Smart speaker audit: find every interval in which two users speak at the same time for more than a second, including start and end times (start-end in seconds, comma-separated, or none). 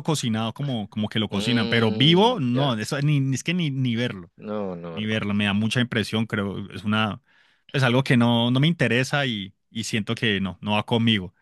1.3-2.7